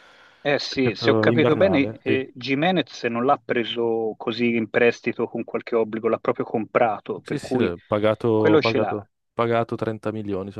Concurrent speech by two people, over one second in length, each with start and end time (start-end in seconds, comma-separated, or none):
0.7-2.3